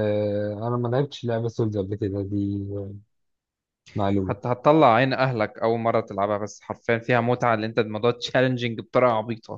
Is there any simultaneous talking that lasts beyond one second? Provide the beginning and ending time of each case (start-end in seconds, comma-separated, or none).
none